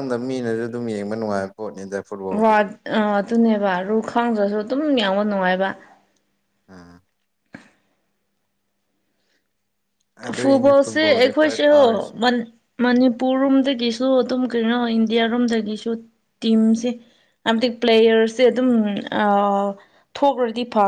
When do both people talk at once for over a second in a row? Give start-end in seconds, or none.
10.4-11.8